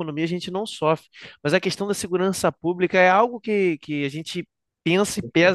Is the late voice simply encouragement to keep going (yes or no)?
yes